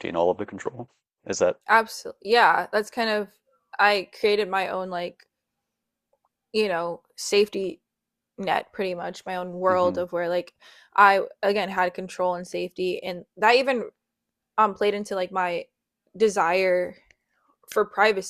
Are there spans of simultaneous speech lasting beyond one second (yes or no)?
no